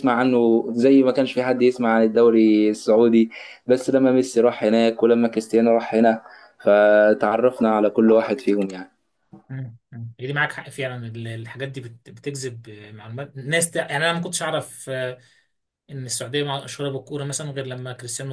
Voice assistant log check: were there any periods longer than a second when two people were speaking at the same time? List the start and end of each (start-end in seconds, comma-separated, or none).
none